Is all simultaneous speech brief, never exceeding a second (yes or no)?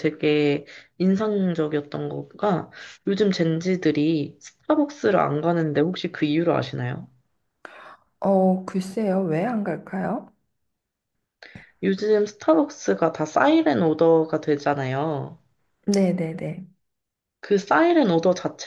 yes